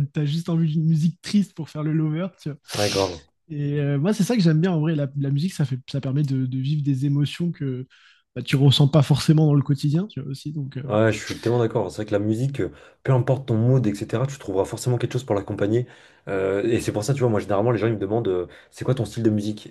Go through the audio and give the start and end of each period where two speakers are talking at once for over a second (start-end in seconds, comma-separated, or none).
none